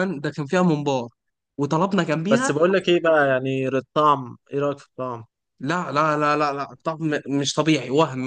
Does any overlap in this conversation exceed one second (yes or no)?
no